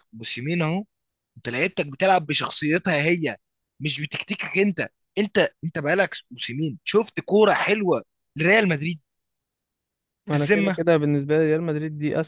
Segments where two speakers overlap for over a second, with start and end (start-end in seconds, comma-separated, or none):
none